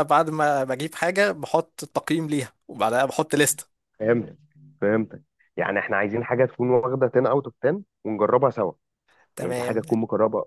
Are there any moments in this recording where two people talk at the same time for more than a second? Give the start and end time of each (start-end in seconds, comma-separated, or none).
none